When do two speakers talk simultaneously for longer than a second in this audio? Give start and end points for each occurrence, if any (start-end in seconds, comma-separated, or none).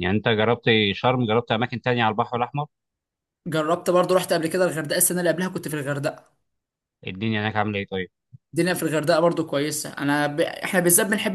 none